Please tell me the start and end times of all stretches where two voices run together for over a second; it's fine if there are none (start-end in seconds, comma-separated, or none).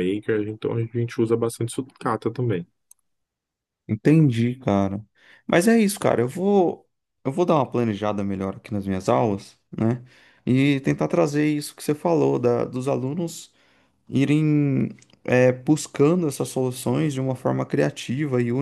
none